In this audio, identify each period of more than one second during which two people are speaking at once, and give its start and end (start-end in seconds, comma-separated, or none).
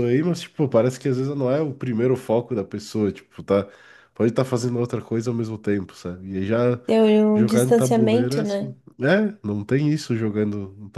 7.3-8.8